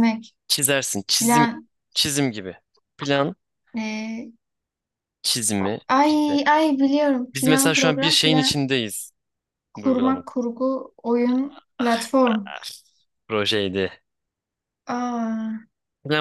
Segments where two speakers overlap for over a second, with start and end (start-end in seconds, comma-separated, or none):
7.3-8.5